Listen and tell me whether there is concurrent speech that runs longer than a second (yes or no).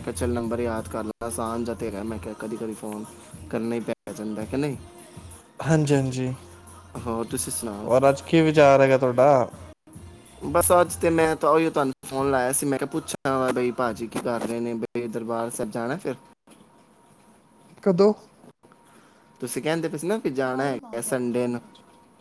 no